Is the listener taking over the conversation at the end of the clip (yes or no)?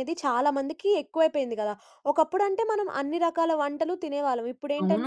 no